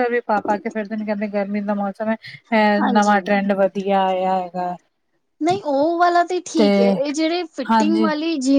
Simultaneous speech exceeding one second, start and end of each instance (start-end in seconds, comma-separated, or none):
none